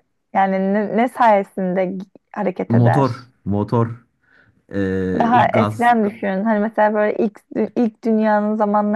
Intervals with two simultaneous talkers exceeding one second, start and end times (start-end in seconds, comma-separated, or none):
none